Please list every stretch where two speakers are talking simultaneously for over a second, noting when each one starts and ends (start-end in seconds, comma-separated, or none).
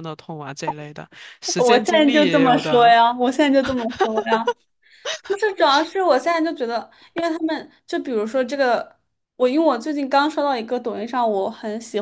1.6-2.9